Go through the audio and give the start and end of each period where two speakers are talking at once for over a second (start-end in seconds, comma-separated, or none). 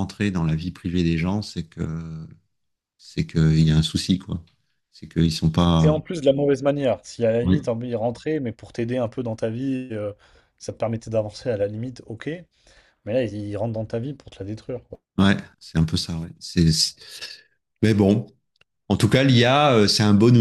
none